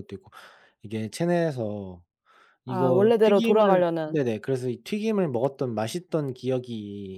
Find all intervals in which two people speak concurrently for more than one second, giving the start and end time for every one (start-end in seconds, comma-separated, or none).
2.7-4.2